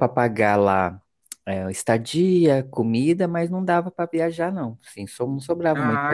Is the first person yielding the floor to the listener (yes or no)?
yes